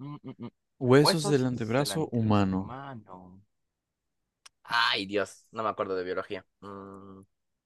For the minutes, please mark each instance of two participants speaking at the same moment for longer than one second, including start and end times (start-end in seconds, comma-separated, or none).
1.0-2.7